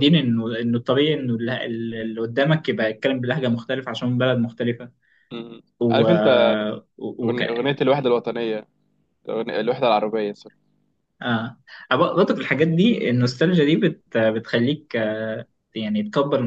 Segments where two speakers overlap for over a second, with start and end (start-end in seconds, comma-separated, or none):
none